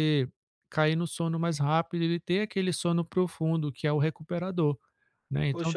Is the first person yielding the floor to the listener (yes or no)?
yes